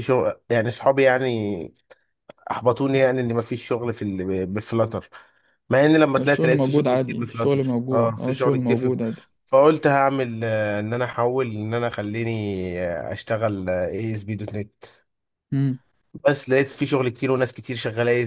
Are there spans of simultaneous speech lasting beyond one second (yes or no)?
yes